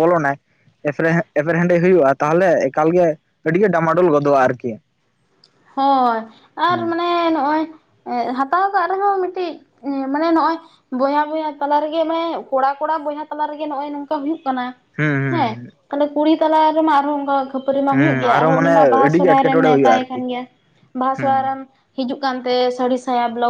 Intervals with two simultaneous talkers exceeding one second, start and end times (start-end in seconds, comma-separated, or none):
17.9-20.2